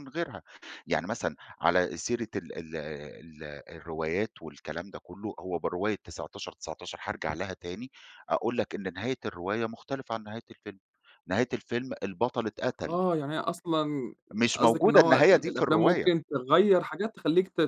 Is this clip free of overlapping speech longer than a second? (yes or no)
no